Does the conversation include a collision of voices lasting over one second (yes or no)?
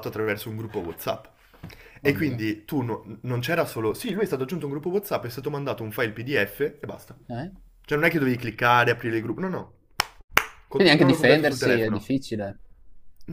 yes